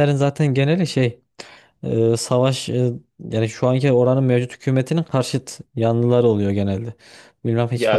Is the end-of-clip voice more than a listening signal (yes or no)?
yes